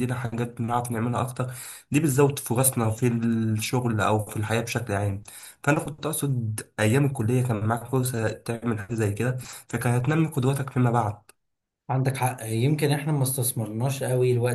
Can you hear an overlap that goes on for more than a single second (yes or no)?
no